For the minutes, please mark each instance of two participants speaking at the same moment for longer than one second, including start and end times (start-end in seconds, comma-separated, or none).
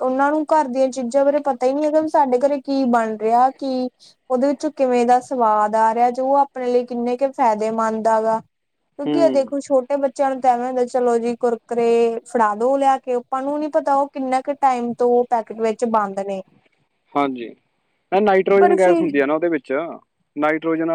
none